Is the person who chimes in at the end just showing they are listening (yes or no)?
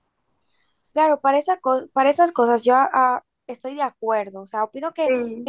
yes